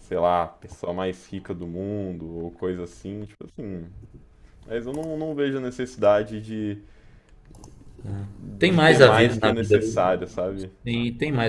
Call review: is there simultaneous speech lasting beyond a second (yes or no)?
yes